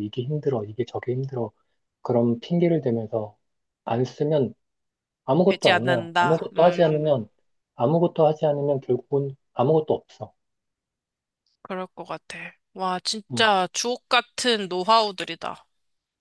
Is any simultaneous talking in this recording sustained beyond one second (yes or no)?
yes